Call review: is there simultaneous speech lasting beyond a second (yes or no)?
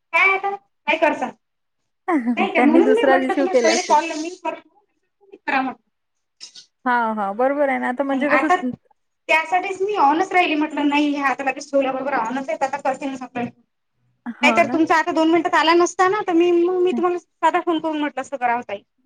yes